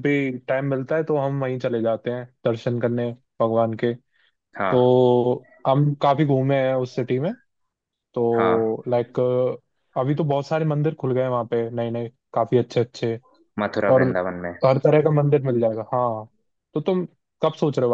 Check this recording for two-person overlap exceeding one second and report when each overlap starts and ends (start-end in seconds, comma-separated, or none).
none